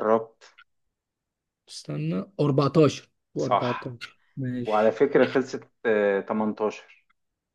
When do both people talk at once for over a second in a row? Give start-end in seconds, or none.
none